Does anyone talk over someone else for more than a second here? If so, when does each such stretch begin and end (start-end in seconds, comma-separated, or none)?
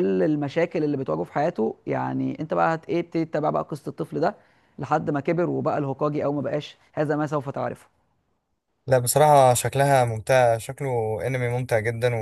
none